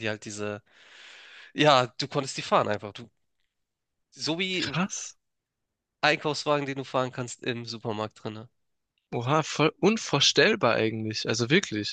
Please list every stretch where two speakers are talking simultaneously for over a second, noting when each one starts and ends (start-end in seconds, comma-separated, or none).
none